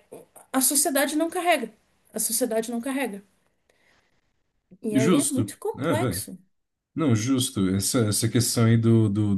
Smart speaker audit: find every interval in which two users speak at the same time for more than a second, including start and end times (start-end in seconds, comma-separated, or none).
4.9-6.3